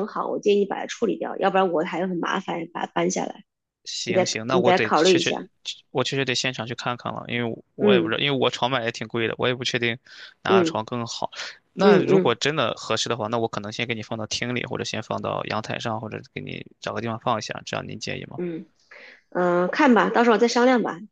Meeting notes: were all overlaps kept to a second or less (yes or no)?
no